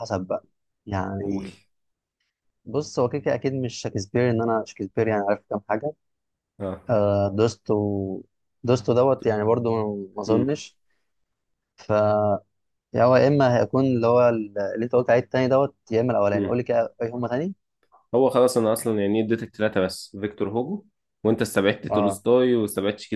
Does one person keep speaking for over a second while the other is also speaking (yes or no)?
no